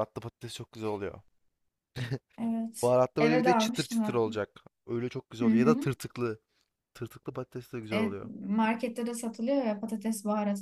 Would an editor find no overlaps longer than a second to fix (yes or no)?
no